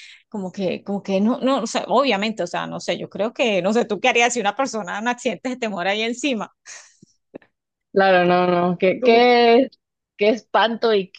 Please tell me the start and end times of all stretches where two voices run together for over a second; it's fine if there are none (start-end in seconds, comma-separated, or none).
none